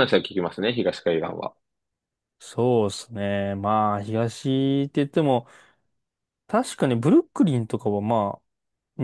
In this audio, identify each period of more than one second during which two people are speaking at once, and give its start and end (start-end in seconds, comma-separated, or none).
none